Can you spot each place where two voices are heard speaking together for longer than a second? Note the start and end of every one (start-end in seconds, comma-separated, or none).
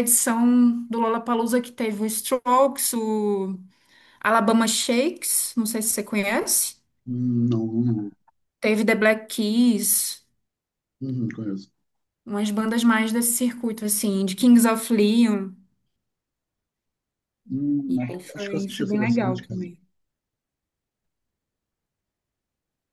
17.9-19.6